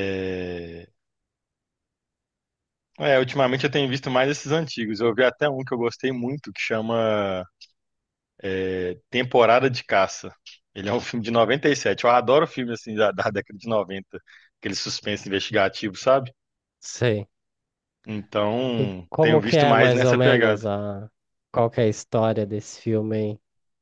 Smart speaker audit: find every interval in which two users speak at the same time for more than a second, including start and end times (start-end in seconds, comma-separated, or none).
18.8-20.6